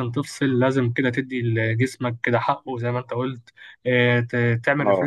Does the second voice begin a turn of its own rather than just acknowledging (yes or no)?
no